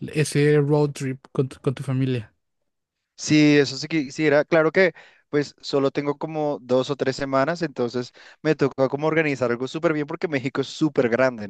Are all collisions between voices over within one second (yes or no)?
yes